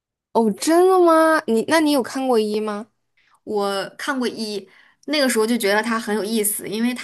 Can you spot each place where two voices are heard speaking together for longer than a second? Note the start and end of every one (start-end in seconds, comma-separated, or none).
none